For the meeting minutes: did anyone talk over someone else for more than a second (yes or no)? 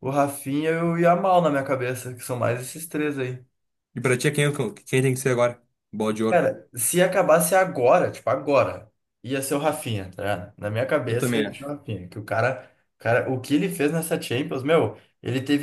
no